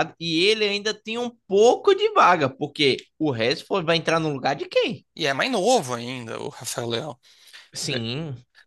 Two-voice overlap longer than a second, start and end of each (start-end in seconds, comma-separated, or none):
none